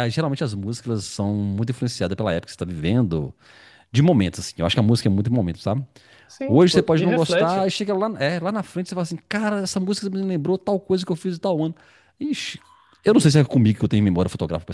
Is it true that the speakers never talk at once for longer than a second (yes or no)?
no